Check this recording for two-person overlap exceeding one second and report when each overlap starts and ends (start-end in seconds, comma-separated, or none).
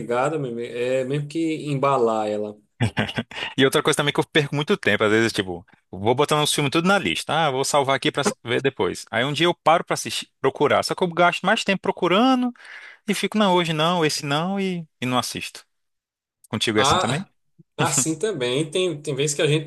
none